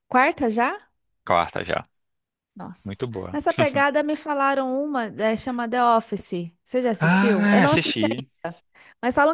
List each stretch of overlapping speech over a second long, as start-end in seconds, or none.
7.0-8.3